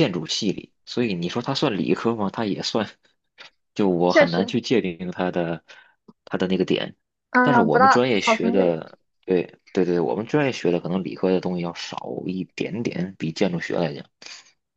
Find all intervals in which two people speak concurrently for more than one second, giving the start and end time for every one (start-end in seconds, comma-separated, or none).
7.4-8.8